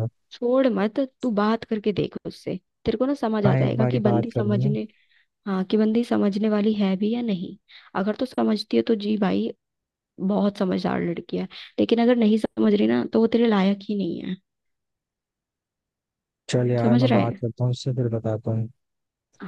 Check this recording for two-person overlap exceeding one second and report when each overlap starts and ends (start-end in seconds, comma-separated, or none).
3.5-4.7